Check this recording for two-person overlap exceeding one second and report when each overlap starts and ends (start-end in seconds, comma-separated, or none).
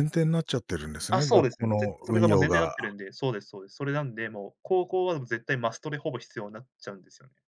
1.1-2.7